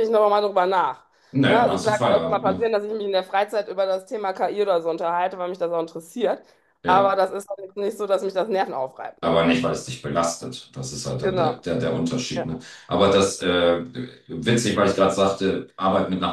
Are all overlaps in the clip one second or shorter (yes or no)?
no